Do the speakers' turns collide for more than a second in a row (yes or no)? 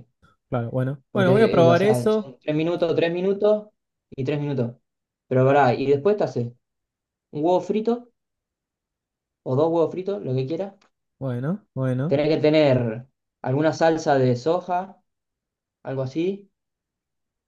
yes